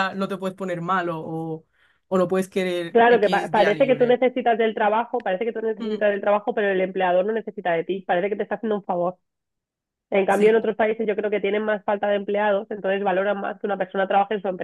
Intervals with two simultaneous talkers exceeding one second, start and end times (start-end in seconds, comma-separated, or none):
2.9-4.2